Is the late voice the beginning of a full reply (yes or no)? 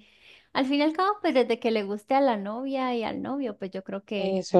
yes